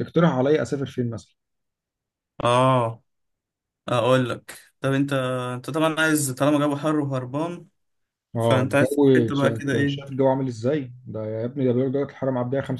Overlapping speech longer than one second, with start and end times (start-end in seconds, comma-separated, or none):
8.4-10.2